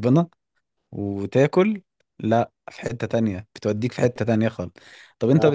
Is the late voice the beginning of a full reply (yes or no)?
no